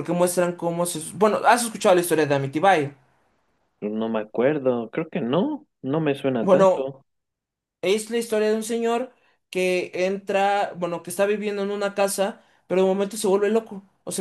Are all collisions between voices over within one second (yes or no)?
yes